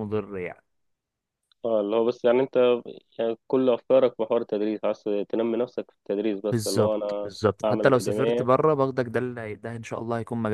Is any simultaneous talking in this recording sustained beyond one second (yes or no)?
yes